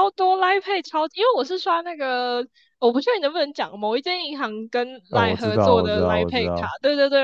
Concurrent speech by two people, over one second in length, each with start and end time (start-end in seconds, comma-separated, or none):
5.1-6.7